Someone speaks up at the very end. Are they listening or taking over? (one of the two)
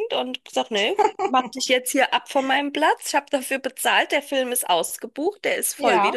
listening